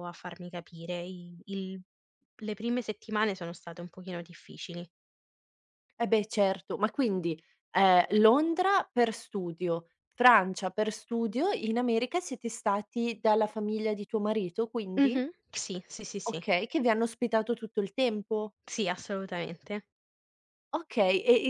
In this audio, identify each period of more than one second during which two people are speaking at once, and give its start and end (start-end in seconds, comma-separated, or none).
none